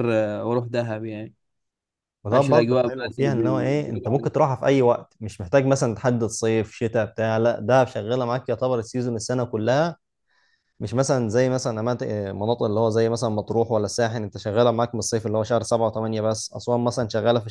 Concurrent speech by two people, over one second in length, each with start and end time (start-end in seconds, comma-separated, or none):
2.3-4.3